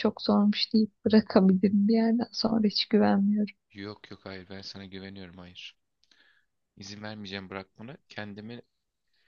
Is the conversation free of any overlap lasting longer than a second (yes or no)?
yes